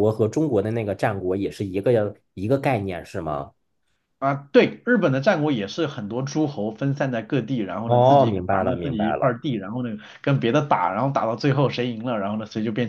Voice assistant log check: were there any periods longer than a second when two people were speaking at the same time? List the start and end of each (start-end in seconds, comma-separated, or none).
7.8-9.3